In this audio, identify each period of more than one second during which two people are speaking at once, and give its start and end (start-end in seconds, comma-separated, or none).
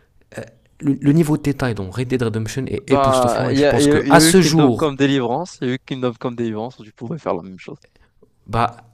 2.9-4.9